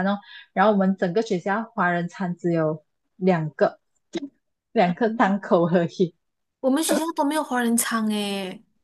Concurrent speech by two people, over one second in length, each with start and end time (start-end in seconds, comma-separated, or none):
none